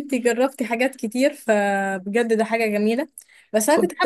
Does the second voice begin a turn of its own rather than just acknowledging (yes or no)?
no